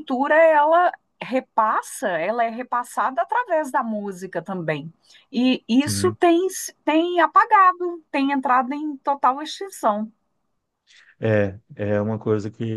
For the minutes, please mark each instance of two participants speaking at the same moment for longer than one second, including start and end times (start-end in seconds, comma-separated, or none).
none